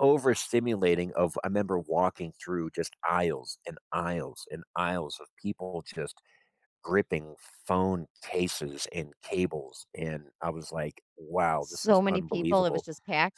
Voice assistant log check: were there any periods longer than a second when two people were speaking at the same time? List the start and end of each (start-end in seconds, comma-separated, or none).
11.6-12.8